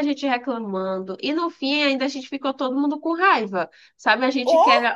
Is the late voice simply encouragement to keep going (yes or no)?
yes